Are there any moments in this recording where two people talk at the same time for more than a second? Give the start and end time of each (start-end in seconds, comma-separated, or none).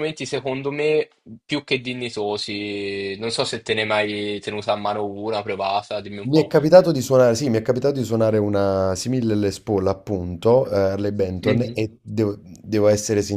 none